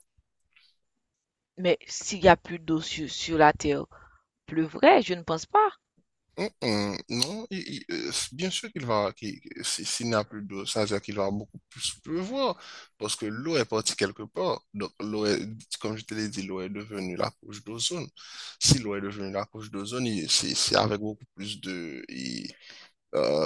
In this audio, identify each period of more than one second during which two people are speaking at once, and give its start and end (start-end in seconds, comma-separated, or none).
none